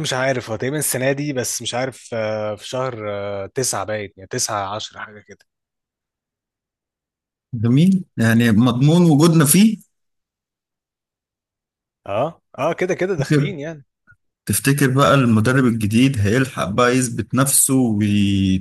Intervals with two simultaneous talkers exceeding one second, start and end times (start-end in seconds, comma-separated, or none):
none